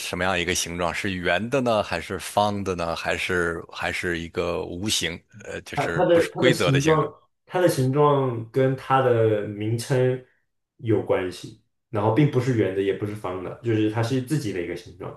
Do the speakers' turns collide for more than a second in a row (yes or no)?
yes